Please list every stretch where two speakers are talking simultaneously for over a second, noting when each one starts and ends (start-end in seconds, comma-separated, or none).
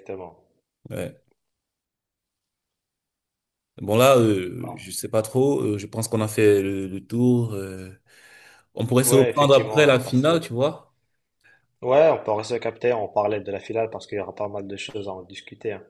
9.0-10.4